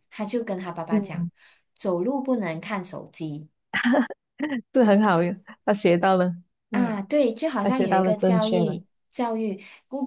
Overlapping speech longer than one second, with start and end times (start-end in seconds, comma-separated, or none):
7.6-8.8